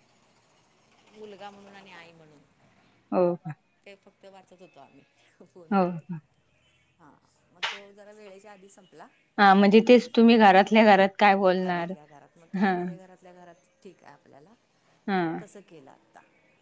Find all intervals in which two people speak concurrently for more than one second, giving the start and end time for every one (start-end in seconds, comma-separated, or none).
none